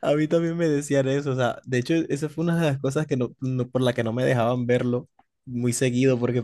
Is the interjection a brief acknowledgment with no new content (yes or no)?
yes